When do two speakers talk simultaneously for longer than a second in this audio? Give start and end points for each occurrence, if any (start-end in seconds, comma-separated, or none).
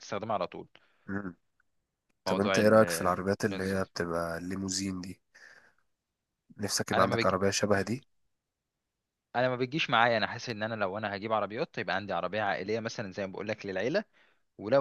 none